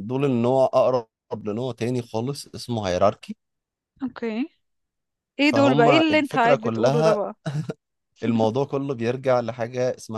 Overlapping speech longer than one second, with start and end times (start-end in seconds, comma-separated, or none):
5.4-7.2